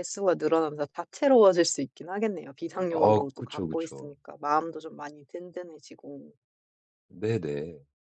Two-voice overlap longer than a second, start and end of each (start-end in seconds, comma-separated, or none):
2.9-4.1